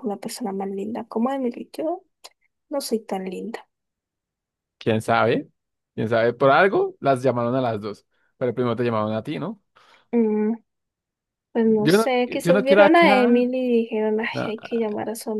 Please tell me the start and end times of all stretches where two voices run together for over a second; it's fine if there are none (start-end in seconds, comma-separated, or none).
11.6-13.3